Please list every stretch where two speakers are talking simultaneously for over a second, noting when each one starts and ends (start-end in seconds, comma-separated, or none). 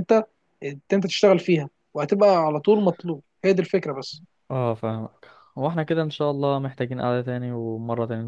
none